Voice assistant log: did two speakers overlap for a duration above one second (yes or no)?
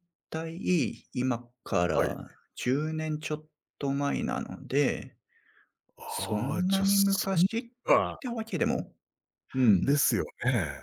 yes